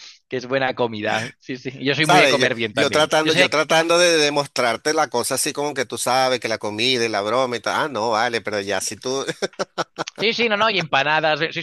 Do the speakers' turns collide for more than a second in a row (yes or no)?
yes